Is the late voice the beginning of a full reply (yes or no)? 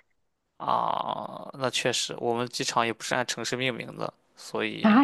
yes